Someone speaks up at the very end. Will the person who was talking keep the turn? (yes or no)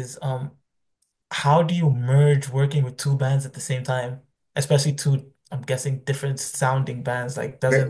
no